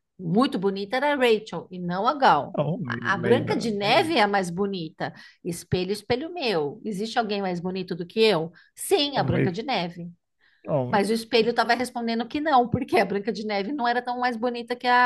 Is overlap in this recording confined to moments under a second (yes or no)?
no